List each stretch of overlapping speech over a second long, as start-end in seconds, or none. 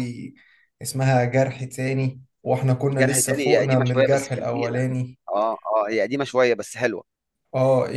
2.9-4.8